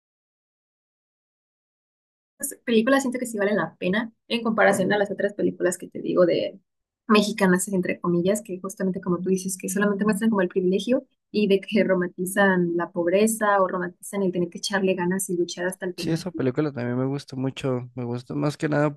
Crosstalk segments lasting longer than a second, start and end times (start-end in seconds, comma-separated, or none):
none